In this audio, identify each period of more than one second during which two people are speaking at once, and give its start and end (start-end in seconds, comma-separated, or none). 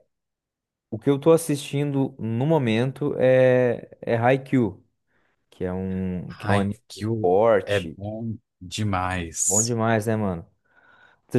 6.3-8.0